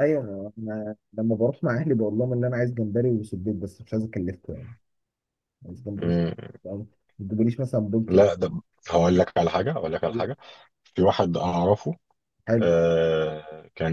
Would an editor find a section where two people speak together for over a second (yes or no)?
no